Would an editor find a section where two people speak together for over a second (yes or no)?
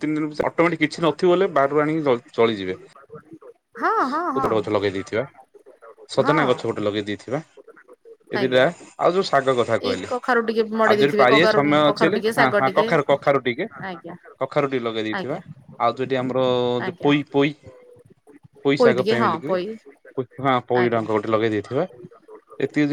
yes